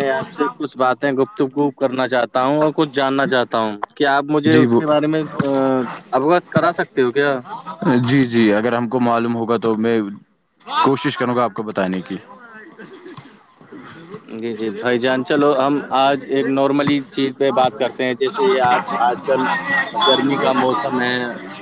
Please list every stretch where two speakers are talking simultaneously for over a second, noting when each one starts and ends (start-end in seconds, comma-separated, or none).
none